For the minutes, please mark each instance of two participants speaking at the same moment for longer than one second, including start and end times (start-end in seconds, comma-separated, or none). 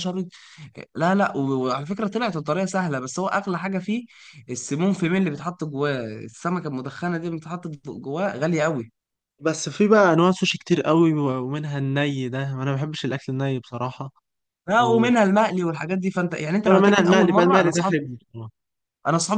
16.7-18.0